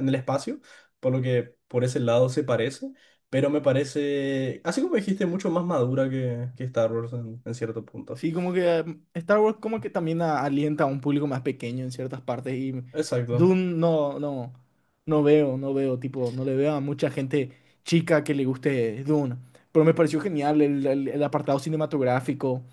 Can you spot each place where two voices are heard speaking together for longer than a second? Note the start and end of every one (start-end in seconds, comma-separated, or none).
none